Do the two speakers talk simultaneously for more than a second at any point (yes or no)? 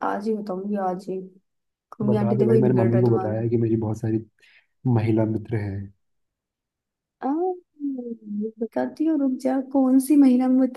yes